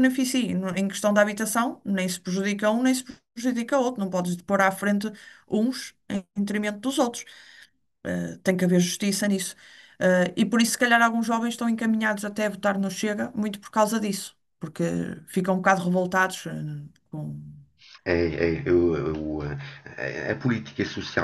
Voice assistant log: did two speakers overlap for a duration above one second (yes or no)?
no